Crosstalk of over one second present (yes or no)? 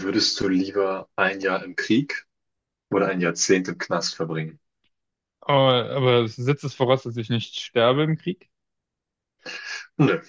no